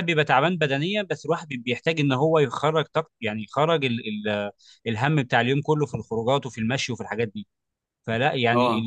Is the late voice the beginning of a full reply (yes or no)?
no